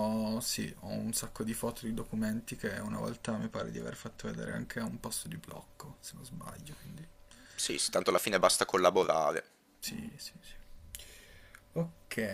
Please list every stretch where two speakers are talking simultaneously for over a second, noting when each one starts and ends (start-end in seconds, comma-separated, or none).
none